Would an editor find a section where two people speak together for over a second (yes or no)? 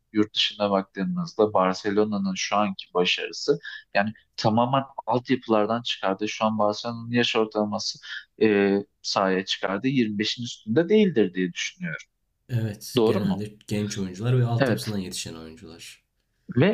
no